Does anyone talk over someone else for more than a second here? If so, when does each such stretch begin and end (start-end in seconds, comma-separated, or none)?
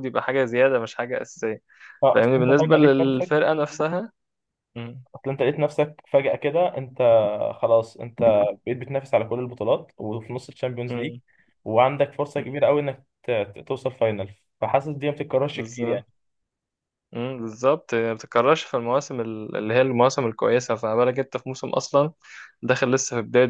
2.1-3.4